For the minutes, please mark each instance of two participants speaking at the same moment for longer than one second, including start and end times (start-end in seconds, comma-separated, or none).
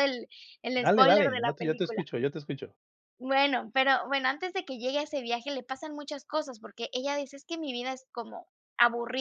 0.8-2.0